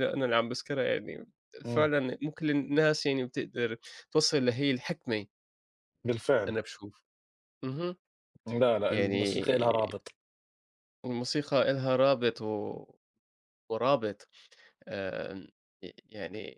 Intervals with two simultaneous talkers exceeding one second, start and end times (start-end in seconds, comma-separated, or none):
none